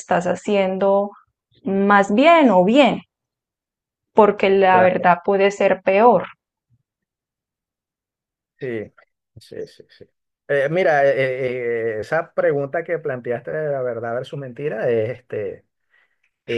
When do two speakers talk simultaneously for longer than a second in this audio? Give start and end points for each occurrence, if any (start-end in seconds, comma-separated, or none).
none